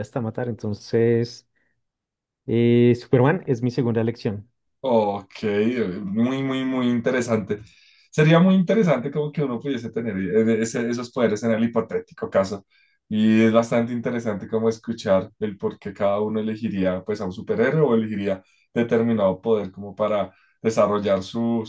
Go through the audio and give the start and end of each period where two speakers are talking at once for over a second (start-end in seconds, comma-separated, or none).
none